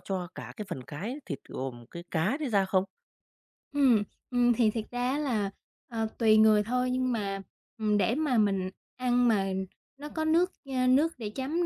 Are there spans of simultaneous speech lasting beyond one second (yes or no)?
no